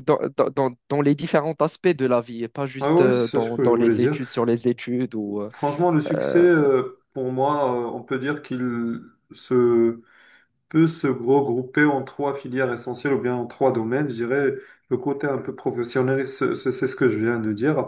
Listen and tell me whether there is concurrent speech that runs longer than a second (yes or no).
yes